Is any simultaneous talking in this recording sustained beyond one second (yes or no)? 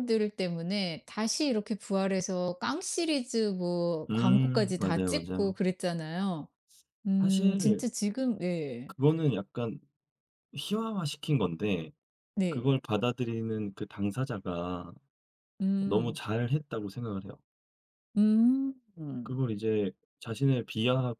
yes